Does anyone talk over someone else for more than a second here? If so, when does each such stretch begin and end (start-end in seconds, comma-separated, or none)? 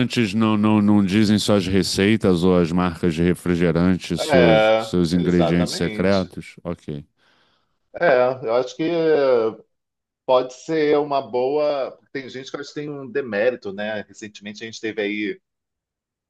4.2-6.3